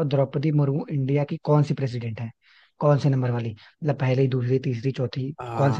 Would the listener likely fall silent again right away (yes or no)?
no